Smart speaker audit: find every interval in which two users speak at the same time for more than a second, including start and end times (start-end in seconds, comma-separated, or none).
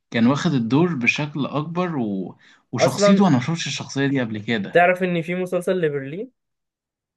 none